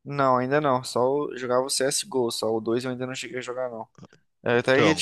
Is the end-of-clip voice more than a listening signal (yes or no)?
no